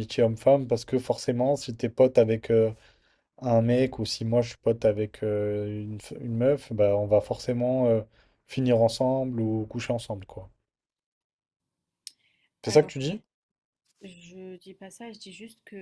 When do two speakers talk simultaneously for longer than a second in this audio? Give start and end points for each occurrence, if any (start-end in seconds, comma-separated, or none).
none